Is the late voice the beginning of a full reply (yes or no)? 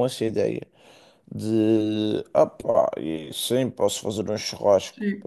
yes